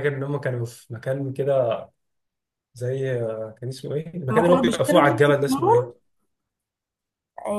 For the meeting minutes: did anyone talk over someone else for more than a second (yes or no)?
yes